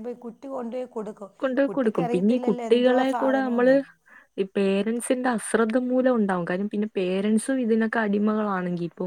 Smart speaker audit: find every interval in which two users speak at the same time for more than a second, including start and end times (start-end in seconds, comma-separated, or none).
1.7-3.7